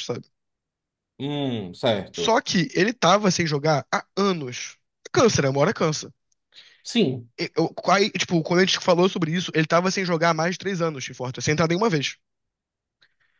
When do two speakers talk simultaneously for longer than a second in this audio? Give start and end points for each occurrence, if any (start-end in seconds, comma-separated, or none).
none